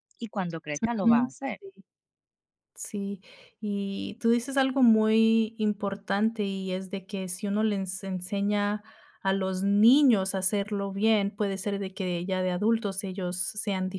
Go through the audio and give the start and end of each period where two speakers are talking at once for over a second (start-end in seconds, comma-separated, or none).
none